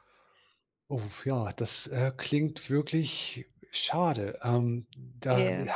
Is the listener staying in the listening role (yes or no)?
yes